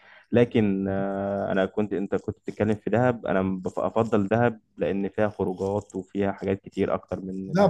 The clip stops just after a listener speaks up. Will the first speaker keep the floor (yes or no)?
no